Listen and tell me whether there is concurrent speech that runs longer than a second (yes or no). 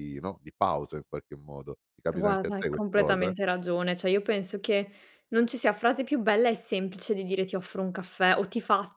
yes